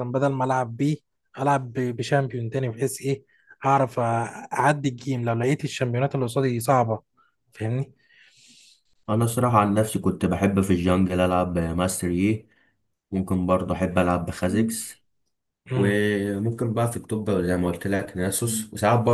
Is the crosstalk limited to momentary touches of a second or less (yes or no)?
yes